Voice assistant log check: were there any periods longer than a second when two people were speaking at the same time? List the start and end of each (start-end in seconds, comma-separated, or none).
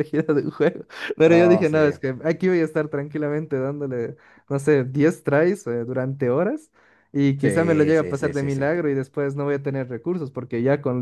7.4-8.7